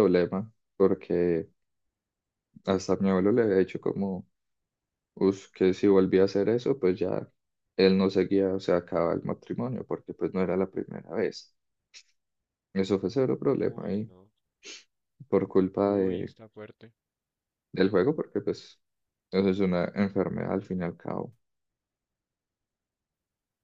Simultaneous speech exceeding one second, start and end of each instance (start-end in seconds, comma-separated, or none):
none